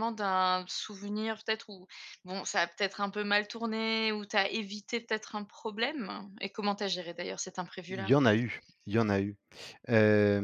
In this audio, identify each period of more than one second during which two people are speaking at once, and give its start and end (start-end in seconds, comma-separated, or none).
none